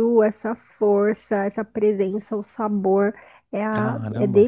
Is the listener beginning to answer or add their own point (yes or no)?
no